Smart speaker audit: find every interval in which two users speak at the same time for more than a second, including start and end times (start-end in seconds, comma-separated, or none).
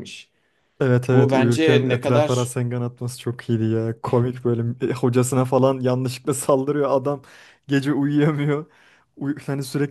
1.1-2.5